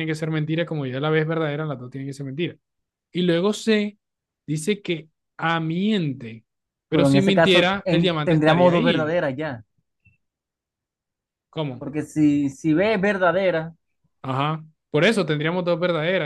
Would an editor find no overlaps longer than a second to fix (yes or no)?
no